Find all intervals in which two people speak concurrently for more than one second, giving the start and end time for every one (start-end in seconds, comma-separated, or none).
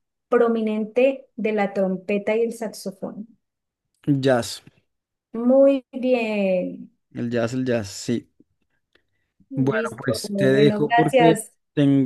9.5-11.3